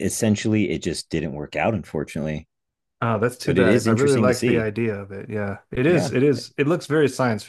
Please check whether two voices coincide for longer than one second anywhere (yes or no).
yes